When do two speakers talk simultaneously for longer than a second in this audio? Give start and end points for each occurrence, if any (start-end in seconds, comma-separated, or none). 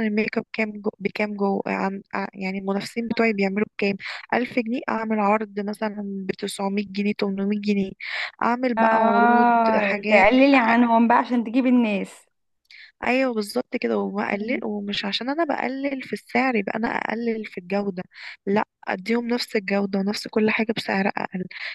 8.8-10.3